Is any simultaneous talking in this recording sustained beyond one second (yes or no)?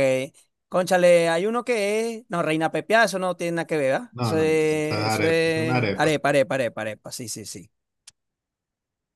yes